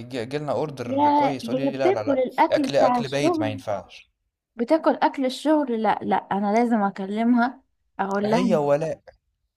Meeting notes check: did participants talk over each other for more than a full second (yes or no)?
yes